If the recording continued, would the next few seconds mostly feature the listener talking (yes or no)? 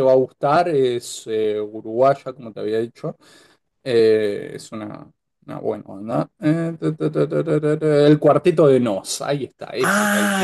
yes